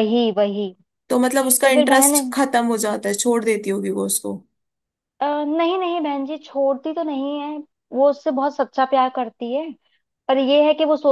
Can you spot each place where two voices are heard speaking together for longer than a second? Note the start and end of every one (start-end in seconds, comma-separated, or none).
none